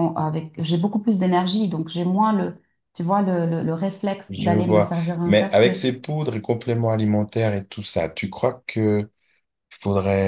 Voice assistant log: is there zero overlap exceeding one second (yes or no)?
no